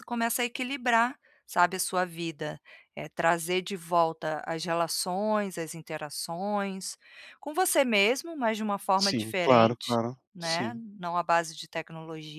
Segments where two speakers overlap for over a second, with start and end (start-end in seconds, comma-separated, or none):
9.0-10.8